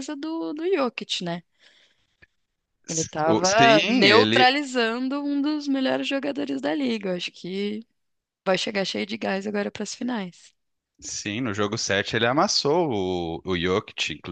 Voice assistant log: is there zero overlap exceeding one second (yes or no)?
no